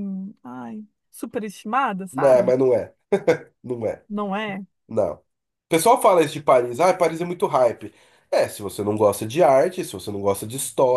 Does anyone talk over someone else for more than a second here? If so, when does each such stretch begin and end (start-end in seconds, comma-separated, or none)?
none